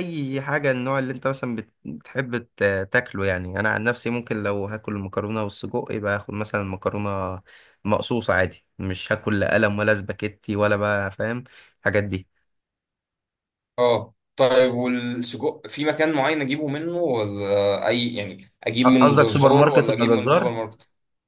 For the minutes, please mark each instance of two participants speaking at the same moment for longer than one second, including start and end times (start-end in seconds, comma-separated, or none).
19.0-20.5